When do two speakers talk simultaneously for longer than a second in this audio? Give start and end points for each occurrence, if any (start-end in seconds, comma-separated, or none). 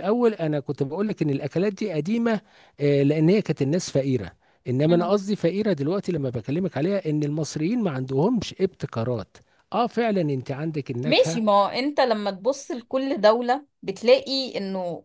none